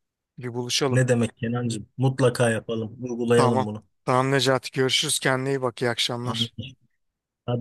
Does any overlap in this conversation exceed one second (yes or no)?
no